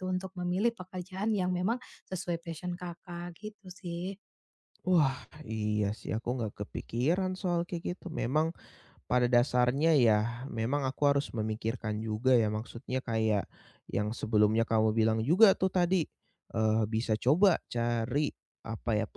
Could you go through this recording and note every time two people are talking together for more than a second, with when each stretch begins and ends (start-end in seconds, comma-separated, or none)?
none